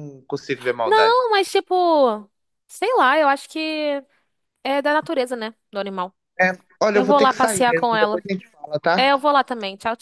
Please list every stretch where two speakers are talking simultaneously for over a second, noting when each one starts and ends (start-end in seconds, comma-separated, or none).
6.9-8.2